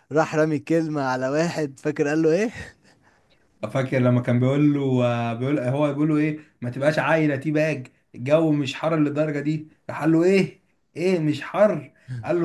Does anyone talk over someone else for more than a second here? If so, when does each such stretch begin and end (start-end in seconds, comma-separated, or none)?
none